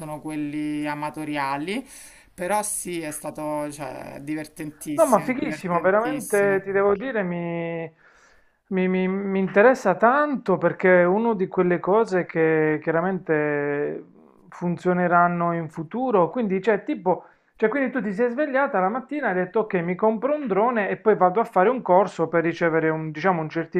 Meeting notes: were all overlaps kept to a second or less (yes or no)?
no